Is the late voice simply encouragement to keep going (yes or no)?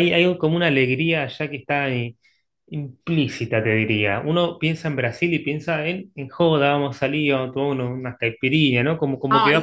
no